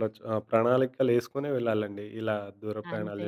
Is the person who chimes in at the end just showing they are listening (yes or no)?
no